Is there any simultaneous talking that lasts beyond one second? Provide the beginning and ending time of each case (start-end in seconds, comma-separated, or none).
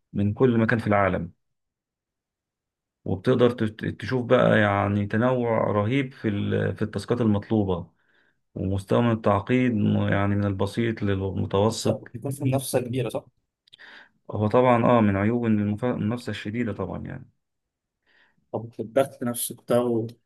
none